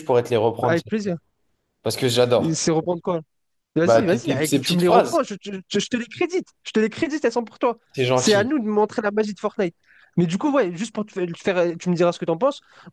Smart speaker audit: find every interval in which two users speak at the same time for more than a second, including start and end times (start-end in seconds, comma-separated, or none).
3.8-5.2